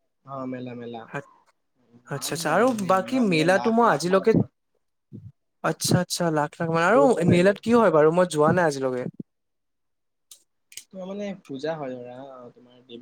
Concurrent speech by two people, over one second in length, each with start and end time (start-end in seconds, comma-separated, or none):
2.1-4.3